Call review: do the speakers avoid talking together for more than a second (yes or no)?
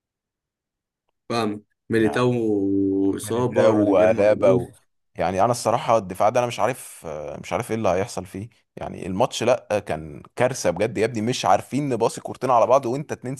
no